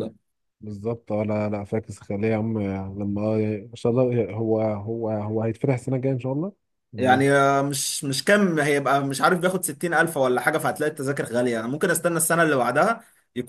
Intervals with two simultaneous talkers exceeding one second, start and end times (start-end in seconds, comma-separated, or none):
none